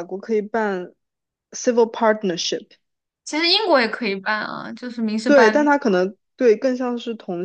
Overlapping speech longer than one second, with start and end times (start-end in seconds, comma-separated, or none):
none